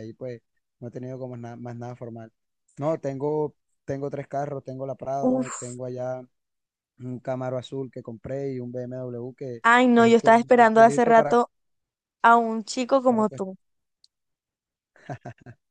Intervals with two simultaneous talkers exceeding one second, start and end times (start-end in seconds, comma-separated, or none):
10.0-11.4